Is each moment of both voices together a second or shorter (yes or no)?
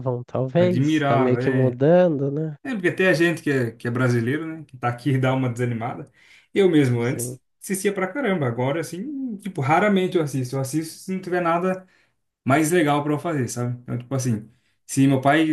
no